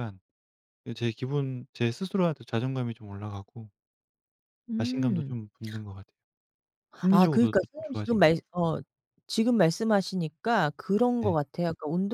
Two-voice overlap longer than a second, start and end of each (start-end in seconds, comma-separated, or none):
7.1-8.4